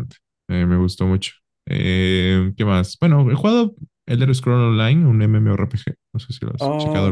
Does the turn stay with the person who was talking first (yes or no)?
no